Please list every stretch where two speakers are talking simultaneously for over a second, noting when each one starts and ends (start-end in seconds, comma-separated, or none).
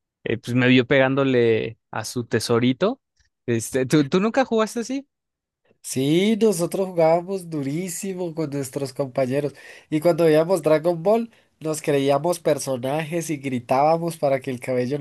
none